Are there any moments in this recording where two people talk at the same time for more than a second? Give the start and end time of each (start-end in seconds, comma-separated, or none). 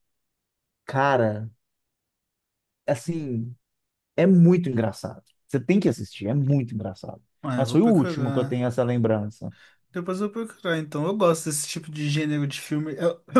7.4-8.7